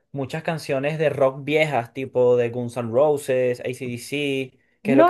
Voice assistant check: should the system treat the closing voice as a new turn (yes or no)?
yes